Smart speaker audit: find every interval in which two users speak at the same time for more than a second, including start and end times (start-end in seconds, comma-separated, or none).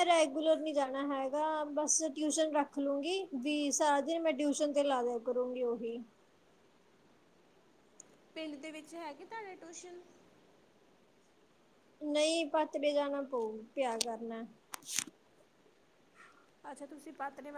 none